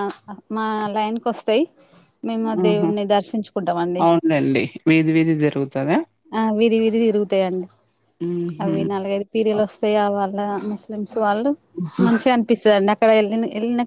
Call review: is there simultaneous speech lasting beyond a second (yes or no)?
no